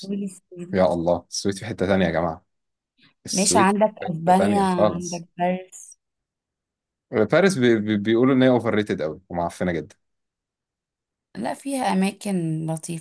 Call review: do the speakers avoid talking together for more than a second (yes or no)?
no